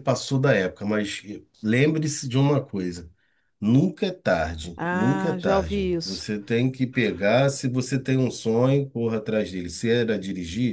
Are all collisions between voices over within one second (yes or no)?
no